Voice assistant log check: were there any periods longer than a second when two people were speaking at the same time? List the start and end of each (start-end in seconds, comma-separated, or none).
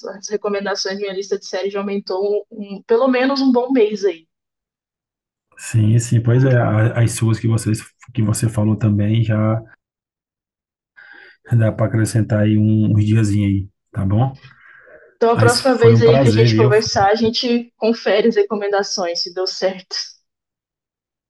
15.3-16.7